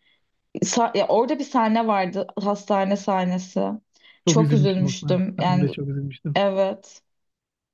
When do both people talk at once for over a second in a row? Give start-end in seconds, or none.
4.2-5.7